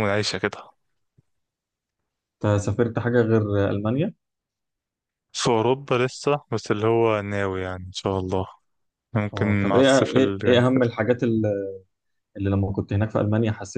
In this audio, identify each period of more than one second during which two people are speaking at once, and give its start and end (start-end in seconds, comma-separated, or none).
9.3-10.9